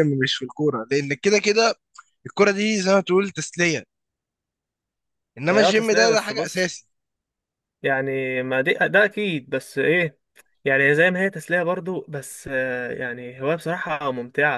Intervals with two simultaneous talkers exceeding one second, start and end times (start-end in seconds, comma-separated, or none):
5.5-6.8